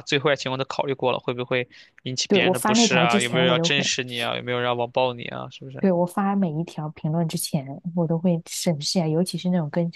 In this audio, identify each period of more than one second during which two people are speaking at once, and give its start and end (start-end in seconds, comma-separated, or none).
2.3-3.9